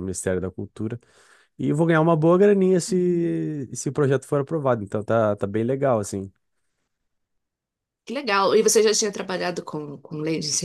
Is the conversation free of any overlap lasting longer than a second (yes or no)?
yes